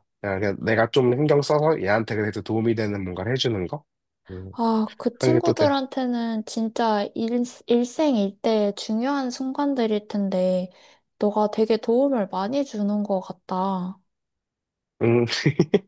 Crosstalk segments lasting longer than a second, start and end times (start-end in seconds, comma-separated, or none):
none